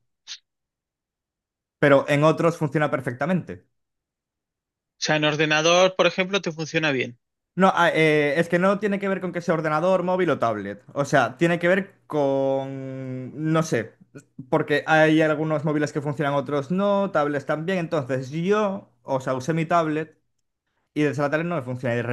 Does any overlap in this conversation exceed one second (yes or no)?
no